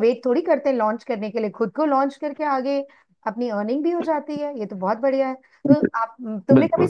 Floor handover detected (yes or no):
no